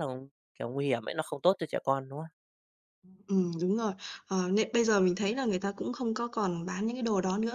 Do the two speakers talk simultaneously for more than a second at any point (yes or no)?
no